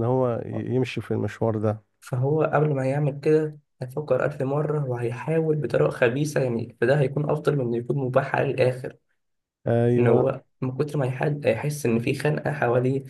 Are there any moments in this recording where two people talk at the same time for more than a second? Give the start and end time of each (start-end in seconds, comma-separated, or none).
none